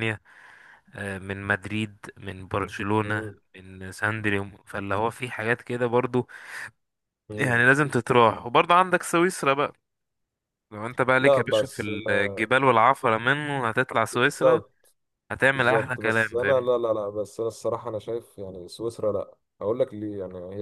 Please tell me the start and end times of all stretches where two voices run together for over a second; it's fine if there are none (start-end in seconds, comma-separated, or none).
11.2-12.5, 15.5-16.7